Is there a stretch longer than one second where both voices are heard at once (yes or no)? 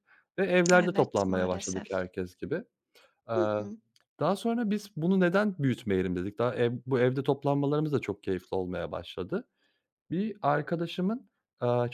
yes